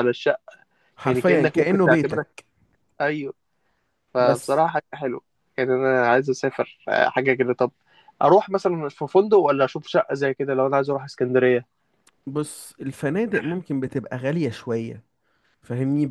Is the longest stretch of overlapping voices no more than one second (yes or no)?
no